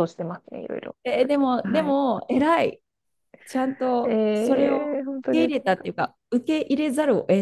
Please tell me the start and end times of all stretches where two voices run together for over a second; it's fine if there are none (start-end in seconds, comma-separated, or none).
none